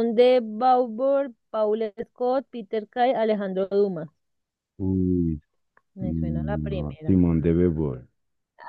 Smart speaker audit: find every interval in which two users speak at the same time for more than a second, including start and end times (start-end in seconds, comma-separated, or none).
6.0-7.2